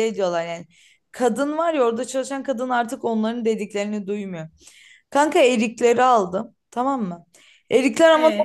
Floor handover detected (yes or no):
no